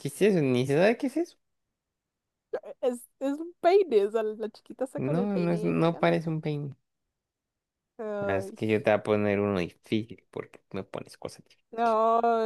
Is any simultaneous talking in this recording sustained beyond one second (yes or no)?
yes